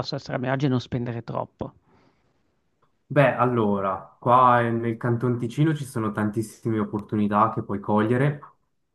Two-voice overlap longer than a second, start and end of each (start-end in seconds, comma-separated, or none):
none